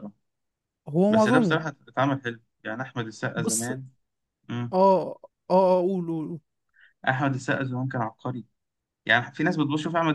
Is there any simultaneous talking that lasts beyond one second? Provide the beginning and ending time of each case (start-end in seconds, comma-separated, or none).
none